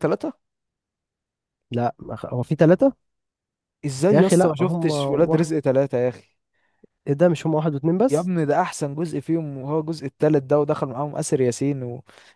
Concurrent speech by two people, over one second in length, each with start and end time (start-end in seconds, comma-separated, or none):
4.1-5.5